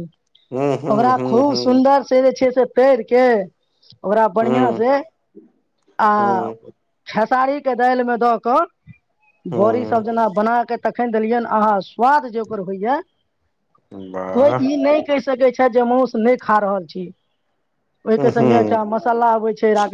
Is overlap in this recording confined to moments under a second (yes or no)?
yes